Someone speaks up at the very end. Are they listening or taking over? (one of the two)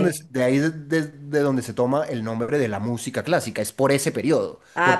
listening